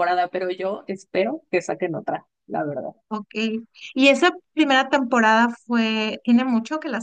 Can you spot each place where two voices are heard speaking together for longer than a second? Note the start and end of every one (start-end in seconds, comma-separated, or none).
none